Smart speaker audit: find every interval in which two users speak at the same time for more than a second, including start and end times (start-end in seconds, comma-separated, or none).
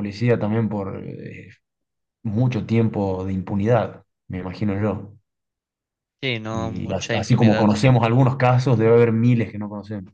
6.5-7.7